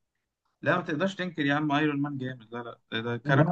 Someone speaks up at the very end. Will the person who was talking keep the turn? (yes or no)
yes